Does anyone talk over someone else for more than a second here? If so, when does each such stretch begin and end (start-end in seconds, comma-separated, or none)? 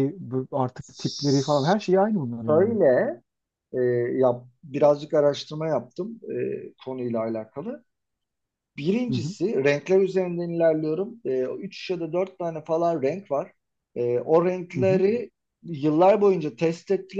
none